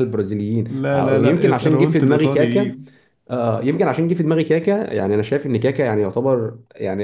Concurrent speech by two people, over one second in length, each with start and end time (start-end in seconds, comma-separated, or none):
0.7-2.8